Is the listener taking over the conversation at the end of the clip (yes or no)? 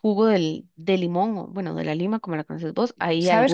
yes